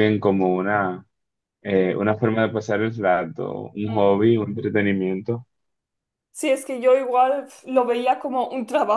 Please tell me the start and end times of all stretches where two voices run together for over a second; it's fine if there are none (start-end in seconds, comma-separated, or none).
none